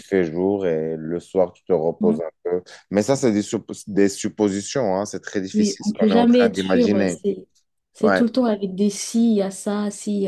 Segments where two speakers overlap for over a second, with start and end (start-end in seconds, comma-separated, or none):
5.5-7.2